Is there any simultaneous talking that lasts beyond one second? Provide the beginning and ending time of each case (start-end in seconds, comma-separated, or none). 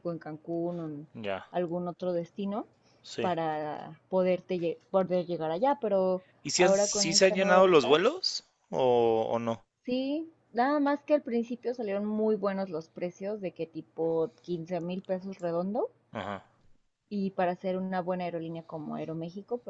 6.4-8.0